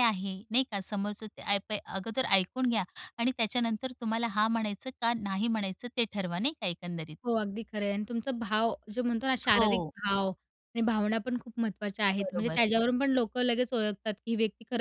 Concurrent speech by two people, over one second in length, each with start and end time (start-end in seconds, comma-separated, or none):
none